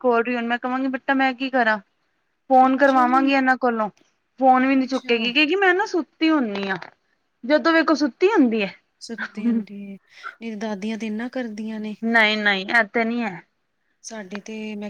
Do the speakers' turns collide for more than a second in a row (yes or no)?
no